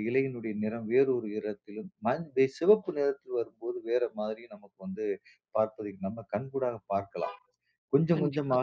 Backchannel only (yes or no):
yes